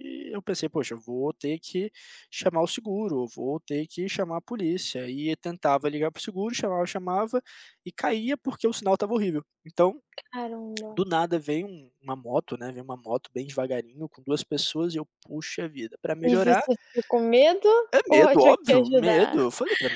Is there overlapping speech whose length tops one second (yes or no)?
yes